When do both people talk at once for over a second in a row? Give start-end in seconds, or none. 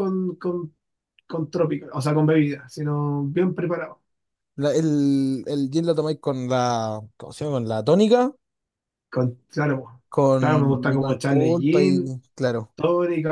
10.4-12.2